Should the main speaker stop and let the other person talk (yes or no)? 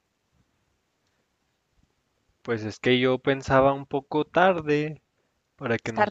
no